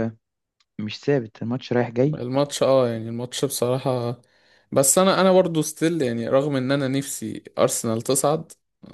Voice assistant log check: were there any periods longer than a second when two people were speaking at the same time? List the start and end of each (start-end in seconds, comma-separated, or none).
none